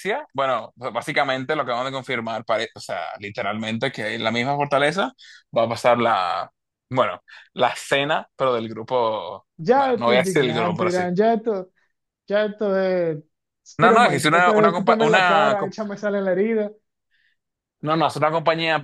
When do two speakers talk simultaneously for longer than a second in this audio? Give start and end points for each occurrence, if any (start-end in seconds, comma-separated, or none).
9.6-11.1, 13.8-15.7